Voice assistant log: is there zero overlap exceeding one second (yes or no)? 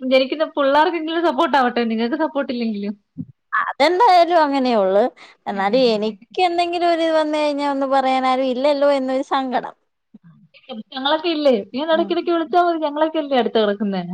yes